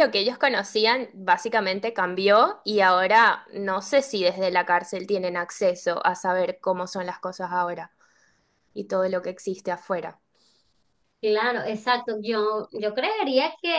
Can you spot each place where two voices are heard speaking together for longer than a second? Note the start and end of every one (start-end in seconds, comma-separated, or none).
none